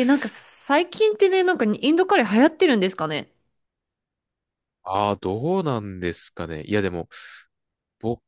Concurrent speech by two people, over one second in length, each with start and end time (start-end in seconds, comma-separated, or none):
none